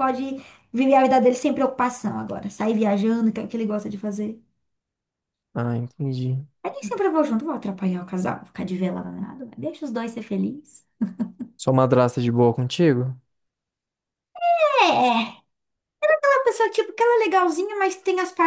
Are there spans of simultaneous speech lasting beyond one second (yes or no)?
no